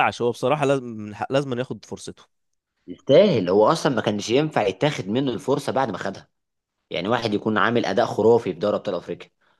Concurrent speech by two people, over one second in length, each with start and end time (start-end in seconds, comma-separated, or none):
none